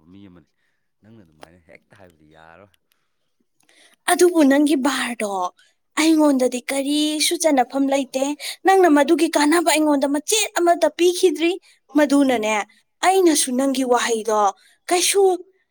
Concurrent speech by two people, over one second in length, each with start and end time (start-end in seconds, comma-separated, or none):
none